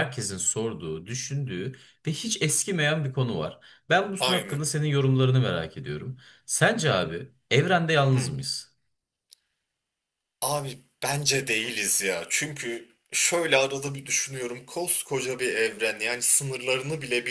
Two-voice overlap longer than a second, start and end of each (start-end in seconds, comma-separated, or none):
none